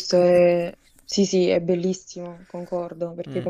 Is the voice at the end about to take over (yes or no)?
no